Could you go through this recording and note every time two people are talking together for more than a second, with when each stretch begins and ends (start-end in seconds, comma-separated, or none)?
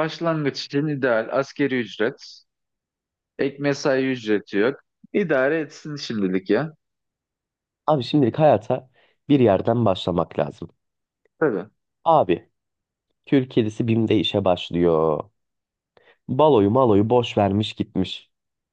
none